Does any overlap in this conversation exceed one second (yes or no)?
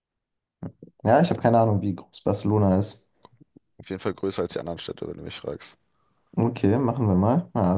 no